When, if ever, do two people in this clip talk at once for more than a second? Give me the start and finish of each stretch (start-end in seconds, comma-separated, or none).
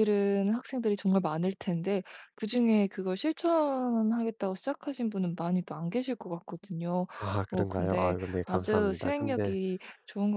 7.5-9.6